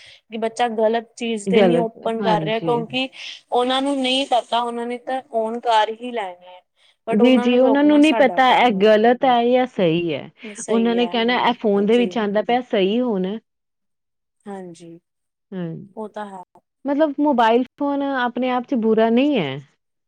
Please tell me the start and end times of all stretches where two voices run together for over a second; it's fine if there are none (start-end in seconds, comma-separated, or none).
1.6-2.8